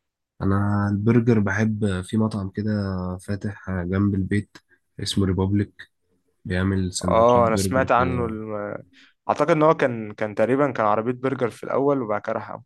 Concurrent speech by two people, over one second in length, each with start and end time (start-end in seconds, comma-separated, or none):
7.0-8.3